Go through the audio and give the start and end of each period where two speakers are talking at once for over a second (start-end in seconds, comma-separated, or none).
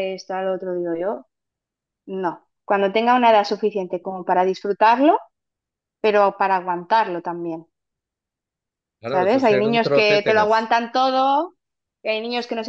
9.0-10.7